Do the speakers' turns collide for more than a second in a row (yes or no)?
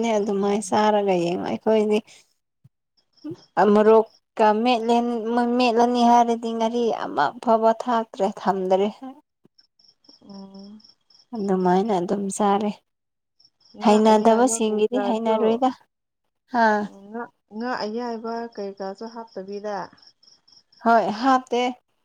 yes